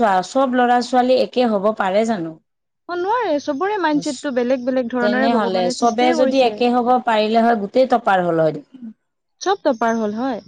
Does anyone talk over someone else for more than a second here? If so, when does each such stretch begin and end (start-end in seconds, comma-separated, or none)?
5.0-6.5